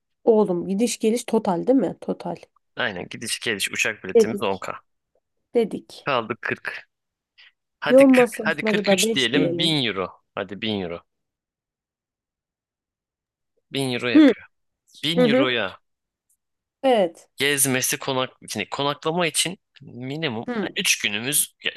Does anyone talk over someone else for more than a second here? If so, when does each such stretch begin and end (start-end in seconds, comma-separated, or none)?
7.9-9.8